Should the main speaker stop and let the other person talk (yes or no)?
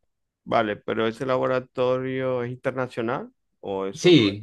yes